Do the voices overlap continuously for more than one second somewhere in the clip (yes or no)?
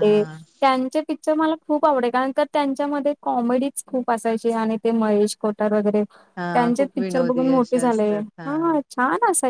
yes